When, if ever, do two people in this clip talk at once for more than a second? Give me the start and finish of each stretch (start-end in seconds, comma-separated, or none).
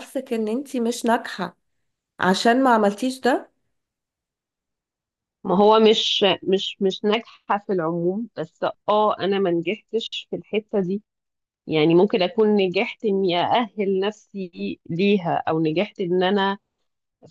none